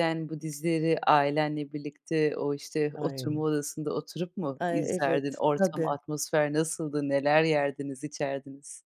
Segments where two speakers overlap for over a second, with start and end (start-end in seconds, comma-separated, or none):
4.6-5.9